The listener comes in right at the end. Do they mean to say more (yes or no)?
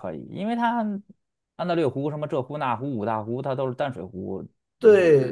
yes